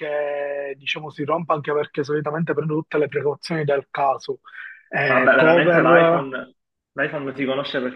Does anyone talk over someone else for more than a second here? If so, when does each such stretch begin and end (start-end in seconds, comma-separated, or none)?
5.1-6.3